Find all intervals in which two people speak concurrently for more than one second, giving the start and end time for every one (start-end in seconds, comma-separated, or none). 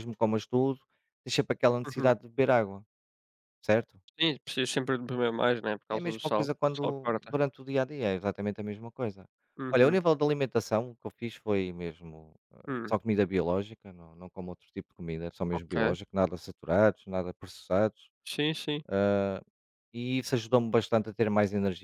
5.9-7.3